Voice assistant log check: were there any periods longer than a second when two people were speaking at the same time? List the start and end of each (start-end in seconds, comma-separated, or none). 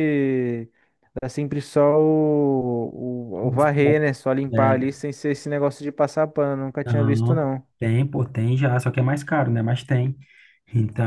none